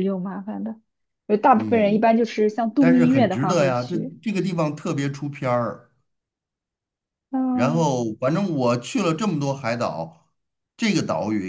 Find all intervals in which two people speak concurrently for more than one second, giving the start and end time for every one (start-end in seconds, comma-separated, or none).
2.8-4.2